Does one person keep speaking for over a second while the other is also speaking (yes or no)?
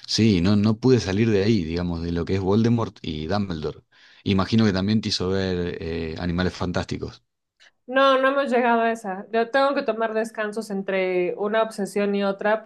no